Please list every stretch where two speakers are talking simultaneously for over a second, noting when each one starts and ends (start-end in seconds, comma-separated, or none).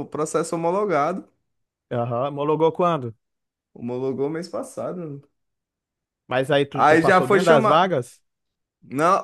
6.7-8.0